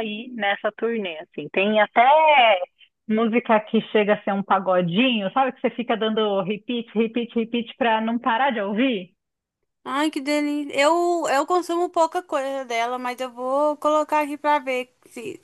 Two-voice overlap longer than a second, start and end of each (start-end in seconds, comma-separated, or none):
none